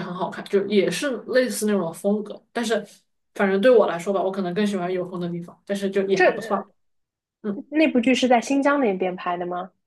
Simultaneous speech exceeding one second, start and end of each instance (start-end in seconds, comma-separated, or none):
none